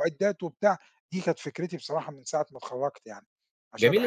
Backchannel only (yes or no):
no